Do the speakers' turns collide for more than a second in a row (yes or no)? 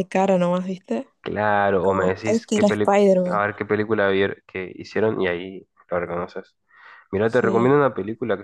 yes